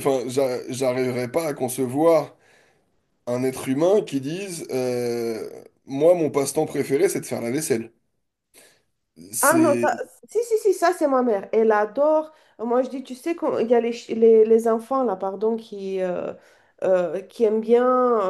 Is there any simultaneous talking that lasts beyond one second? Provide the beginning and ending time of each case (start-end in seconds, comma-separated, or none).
none